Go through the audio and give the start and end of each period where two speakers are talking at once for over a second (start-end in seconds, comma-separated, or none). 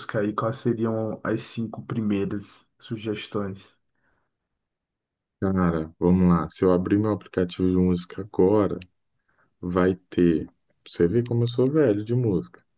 none